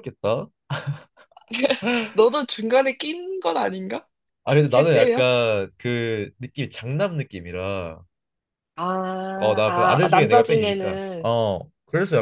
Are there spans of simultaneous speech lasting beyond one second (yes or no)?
yes